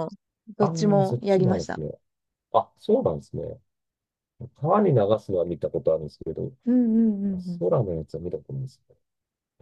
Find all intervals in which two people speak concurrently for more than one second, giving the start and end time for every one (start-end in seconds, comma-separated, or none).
0.6-1.8